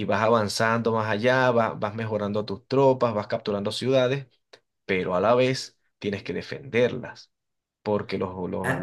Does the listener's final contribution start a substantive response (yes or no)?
no